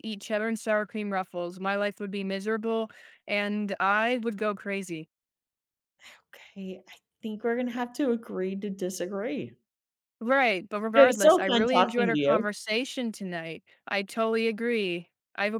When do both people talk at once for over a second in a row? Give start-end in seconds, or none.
10.9-12.4